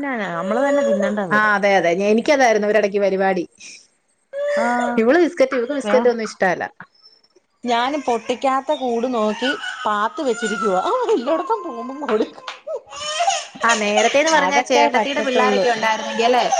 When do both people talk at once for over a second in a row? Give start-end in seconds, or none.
none